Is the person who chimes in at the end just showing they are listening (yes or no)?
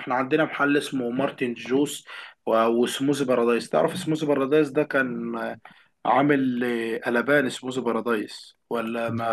no